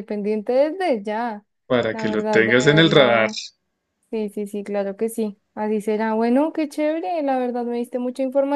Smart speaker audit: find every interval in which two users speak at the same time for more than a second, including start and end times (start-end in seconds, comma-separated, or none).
1.9-3.3